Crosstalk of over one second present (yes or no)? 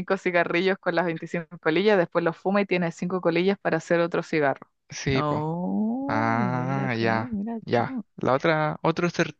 yes